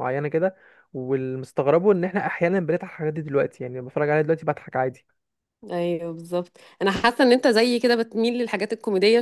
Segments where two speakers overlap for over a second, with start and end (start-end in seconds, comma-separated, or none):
none